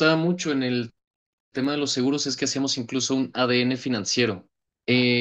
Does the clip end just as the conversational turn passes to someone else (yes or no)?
no